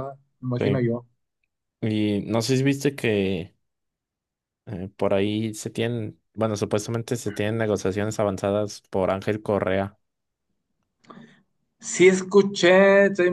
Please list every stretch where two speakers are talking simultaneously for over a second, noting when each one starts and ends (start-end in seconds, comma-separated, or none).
none